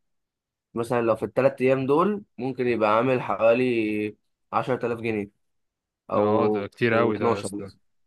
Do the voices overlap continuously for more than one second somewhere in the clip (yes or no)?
yes